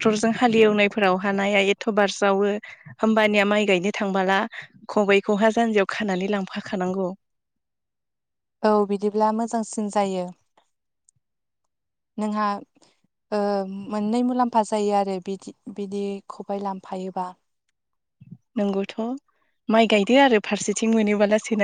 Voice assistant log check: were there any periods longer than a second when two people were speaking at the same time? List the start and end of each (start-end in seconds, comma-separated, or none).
none